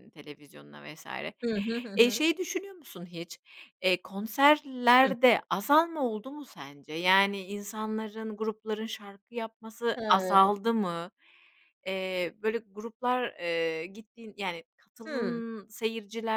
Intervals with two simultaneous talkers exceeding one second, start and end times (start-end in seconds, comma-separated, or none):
none